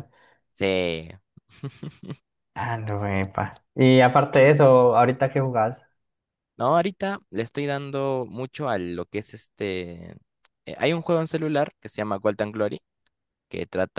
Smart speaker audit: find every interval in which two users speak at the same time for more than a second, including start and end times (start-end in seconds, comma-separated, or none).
none